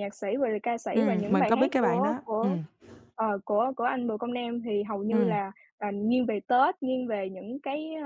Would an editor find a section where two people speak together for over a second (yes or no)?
yes